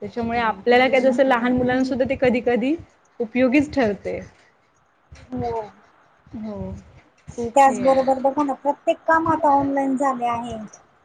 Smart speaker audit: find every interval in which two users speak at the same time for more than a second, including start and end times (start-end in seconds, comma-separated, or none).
none